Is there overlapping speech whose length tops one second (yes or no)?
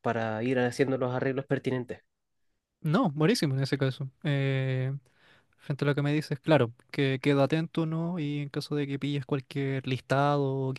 no